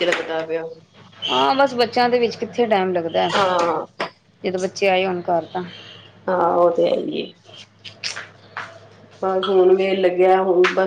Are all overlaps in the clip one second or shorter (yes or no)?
yes